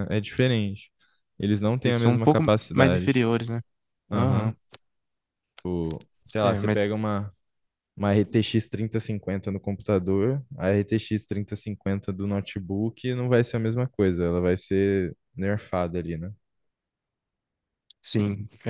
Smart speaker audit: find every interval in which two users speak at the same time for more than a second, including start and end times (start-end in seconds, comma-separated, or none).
1.8-3.2